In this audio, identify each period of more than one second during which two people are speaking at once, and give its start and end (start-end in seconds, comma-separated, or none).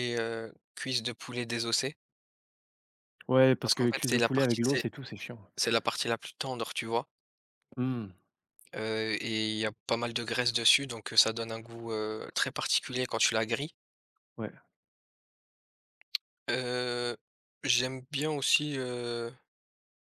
3.6-4.8